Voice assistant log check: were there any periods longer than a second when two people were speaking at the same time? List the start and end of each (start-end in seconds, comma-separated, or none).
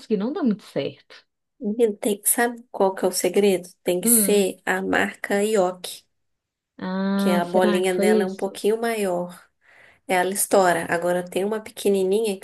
7.2-8.6